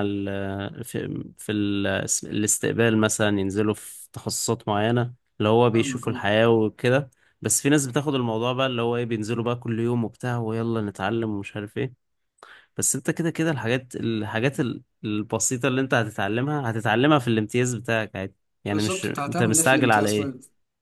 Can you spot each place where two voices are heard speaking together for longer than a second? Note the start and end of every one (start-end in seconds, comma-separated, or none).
18.7-20.3